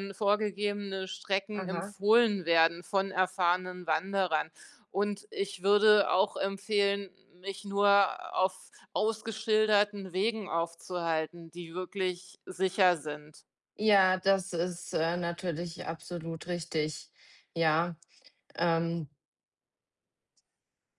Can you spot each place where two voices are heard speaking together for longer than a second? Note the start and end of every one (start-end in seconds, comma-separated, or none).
none